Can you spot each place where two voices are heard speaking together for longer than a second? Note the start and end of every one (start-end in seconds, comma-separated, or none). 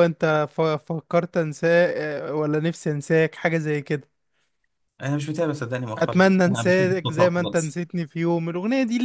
6.0-7.8